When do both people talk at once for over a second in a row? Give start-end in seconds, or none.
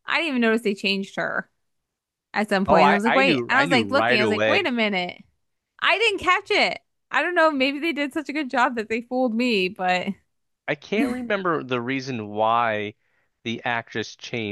2.7-4.7